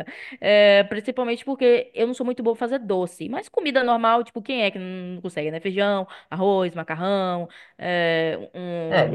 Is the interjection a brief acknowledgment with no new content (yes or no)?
no